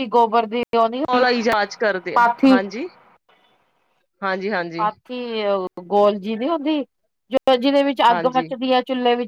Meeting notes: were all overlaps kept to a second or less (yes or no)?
yes